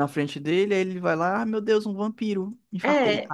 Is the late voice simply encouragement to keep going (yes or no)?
no